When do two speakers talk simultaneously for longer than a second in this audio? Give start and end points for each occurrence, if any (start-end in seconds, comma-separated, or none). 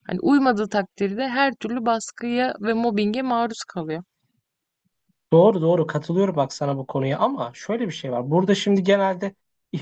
none